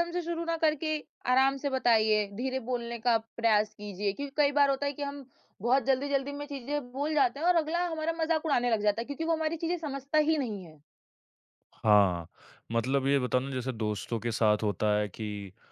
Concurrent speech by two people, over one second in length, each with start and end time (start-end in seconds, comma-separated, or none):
none